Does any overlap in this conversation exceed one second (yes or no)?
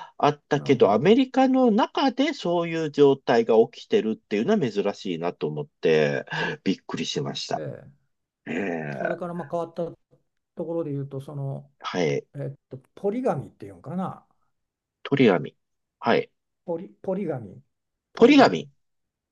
no